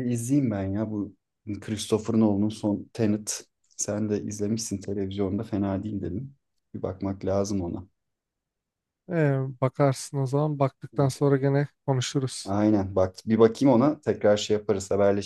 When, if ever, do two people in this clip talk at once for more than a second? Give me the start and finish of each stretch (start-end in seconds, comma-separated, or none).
none